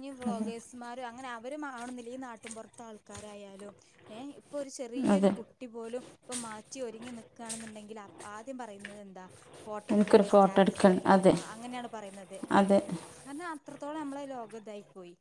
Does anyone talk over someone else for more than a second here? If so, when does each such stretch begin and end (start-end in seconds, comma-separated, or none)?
9.9-11.3